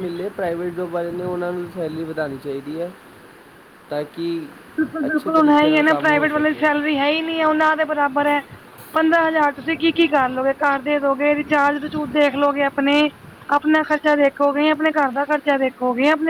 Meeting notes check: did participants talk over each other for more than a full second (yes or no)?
yes